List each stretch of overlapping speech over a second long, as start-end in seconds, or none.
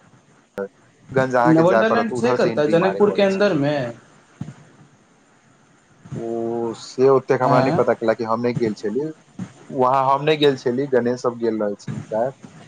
1.6-3.4